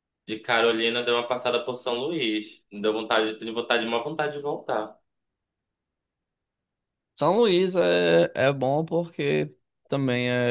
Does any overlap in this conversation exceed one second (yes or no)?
no